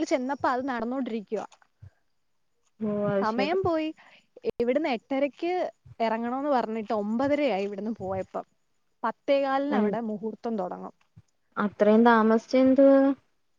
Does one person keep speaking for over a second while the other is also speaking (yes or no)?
no